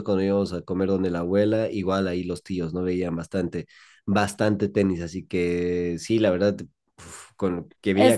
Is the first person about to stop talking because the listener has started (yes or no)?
yes